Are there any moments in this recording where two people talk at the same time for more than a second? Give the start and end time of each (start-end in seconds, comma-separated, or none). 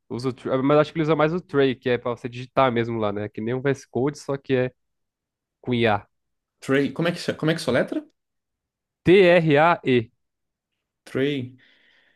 none